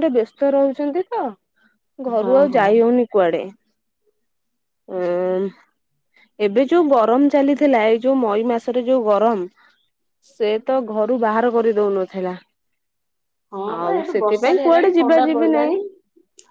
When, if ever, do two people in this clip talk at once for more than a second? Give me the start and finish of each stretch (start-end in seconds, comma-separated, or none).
13.8-15.7